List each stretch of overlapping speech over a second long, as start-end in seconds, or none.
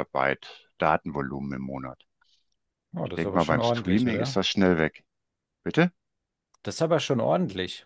3.0-4.4